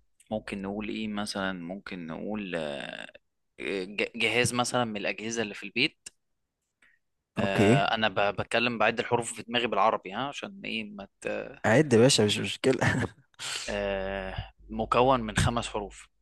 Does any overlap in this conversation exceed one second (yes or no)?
no